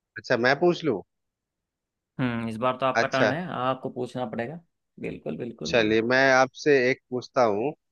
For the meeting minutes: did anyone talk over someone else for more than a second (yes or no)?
no